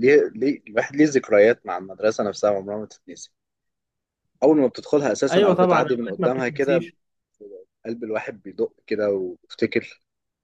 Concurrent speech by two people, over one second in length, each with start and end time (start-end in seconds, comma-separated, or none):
5.3-6.9